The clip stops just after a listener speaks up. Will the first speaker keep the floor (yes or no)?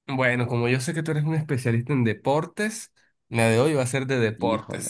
yes